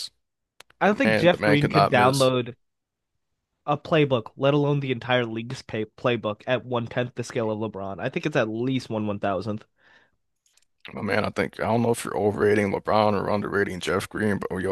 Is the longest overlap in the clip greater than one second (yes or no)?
yes